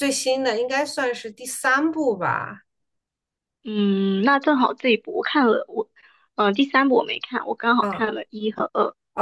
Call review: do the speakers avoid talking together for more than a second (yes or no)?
yes